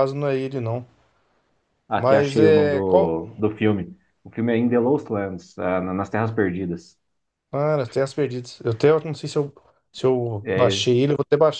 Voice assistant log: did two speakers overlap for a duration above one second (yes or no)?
yes